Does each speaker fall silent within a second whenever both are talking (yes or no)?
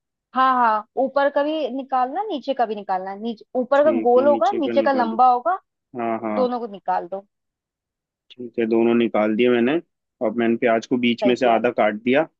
no